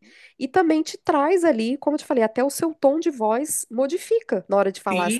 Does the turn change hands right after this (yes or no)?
yes